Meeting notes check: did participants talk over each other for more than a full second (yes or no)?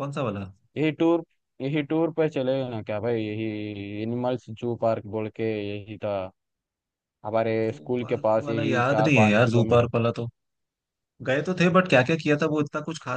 yes